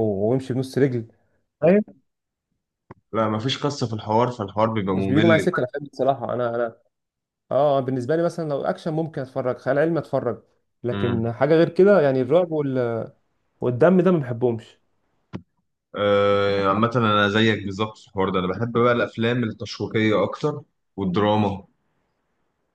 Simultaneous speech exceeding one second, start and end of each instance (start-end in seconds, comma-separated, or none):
none